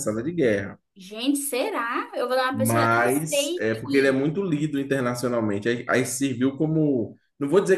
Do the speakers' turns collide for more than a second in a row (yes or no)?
yes